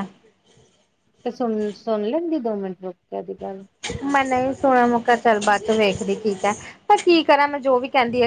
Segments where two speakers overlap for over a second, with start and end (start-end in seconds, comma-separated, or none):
none